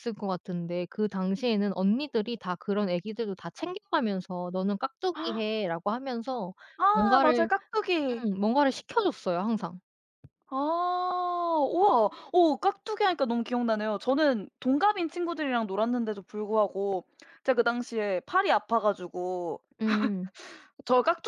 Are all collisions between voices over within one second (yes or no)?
yes